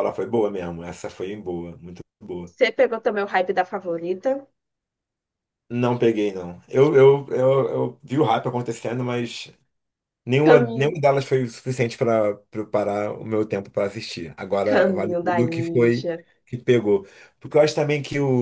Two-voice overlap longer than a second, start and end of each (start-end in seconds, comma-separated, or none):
14.6-16.1